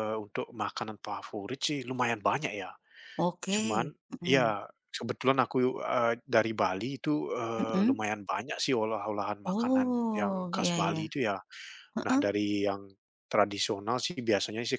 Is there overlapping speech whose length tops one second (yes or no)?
yes